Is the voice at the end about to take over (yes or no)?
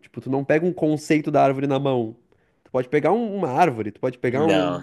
no